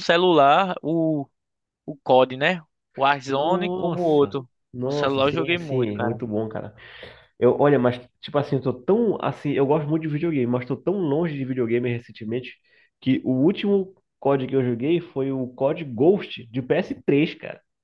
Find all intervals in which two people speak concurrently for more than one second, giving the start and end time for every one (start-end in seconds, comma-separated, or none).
3.3-6.2